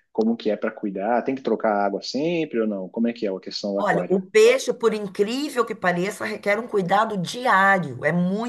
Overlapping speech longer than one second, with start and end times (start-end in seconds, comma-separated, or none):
none